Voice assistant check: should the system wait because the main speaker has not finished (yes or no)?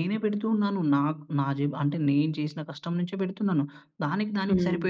yes